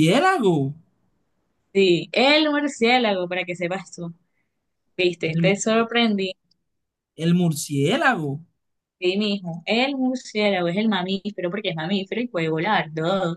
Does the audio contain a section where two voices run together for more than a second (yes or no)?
no